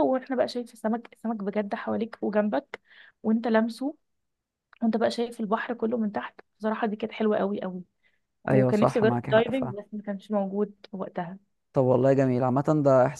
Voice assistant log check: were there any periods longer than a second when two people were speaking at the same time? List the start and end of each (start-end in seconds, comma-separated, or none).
8.5-9.7